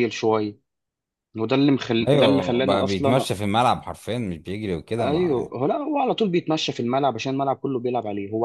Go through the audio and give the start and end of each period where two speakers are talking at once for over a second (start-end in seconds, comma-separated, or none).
2.1-3.3